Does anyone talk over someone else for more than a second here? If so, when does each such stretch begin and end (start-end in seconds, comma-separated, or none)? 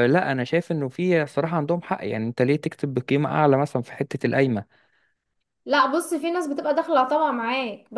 none